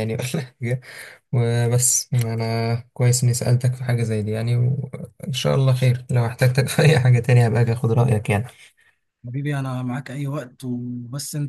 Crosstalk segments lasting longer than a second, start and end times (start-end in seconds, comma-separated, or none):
none